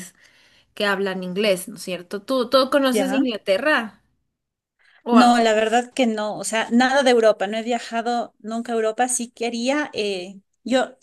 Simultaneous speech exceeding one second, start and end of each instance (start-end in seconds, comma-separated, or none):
none